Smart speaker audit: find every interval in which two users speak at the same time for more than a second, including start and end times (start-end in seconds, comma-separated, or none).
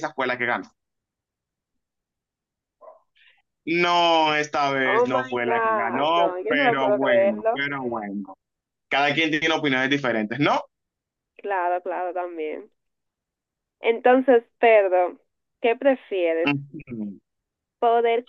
4.8-7.6